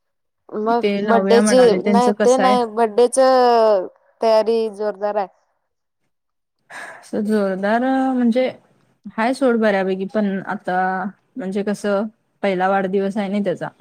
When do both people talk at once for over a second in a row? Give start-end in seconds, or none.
0.8-2.6